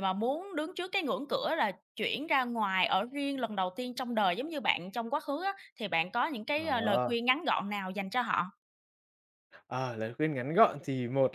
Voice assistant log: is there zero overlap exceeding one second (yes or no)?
yes